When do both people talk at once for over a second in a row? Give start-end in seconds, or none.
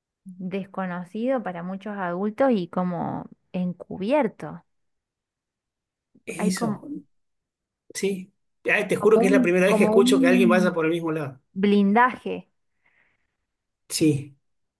9.0-10.8